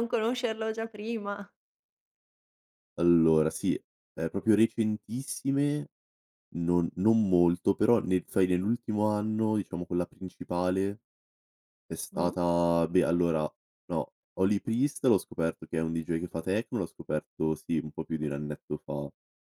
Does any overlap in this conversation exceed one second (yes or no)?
no